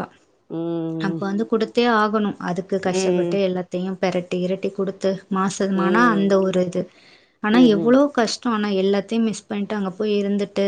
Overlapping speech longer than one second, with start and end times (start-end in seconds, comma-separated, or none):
none